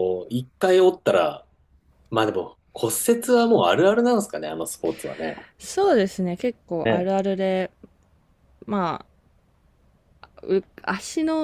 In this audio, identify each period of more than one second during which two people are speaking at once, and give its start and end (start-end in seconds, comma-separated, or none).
none